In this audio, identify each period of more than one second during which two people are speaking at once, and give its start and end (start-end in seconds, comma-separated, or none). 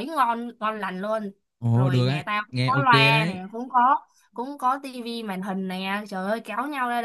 1.7-3.4